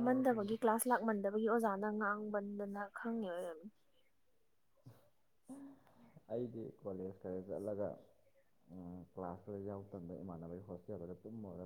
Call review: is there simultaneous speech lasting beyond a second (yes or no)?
no